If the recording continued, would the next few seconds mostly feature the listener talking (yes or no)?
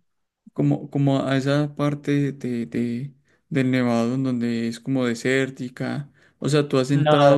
no